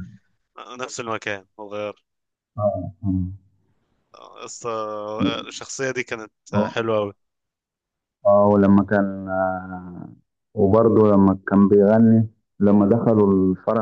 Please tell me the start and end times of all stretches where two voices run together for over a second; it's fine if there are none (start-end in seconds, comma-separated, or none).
none